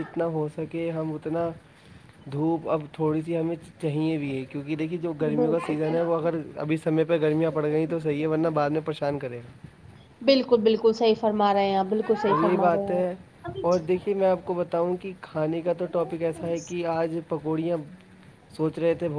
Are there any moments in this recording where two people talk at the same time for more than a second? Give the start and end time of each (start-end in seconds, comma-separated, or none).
none